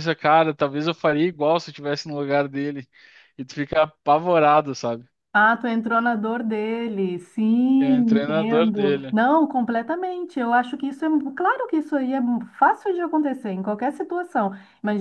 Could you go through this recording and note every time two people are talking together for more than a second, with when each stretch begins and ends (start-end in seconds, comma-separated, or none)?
8.0-9.2